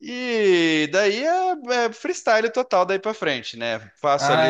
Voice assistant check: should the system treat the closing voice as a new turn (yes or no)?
no